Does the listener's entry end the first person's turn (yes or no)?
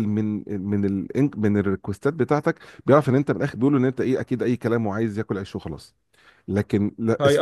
yes